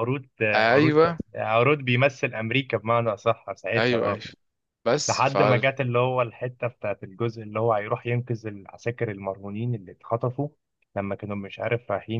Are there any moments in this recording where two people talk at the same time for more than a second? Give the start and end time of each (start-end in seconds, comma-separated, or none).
none